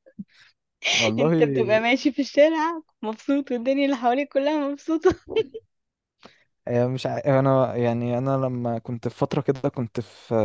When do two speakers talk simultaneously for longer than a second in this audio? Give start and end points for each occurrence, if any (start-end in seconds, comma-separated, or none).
none